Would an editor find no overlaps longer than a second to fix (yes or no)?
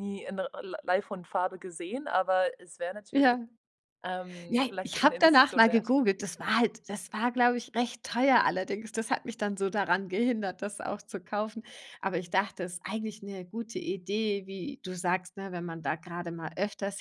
no